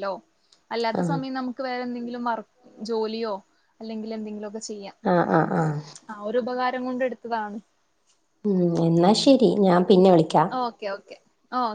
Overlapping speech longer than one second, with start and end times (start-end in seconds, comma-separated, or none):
none